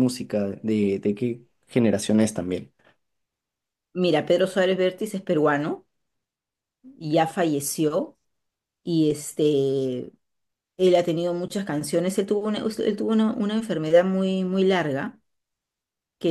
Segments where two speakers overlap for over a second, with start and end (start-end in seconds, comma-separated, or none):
none